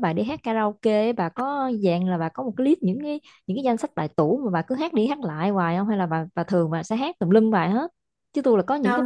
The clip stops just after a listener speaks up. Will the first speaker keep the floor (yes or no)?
no